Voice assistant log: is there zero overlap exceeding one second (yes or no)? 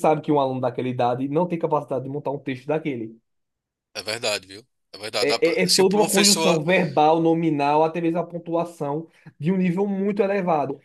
no